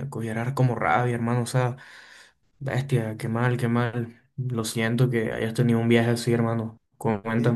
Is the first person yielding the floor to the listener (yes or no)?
yes